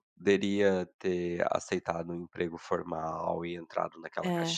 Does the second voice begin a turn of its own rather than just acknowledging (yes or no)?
no